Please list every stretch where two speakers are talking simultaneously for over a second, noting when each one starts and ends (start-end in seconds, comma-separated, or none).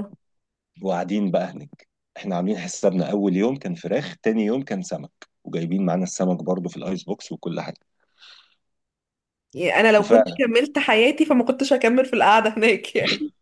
none